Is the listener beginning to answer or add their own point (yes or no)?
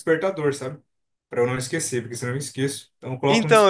yes